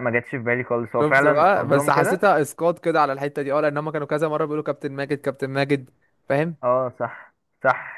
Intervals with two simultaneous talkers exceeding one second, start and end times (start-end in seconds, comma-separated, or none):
1.0-2.3